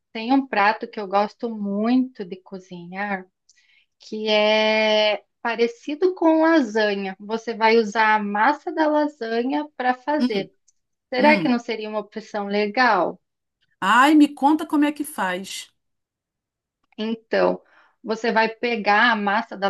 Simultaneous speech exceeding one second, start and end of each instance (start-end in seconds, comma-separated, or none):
none